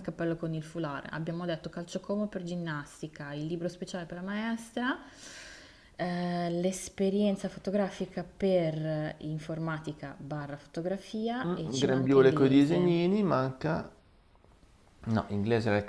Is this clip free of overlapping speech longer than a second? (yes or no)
no